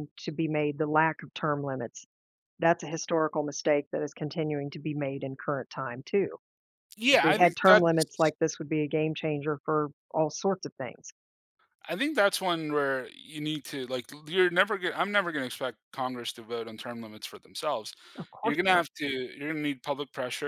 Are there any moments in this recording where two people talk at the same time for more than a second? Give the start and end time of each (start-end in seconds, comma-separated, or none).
7.1-8.3